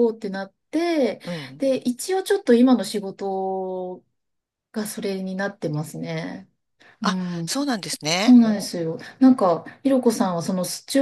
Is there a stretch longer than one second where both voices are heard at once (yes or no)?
no